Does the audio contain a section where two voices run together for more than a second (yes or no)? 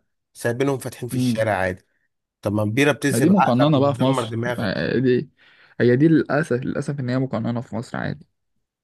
yes